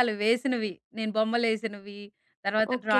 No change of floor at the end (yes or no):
no